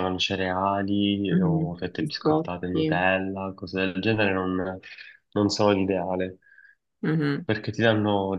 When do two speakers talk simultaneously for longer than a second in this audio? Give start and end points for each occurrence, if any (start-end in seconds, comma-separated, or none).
1.3-3.0